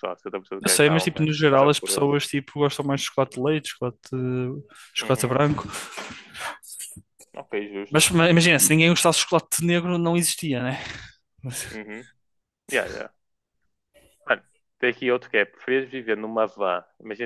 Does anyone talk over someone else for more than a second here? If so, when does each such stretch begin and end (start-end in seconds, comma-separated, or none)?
0.6-2.1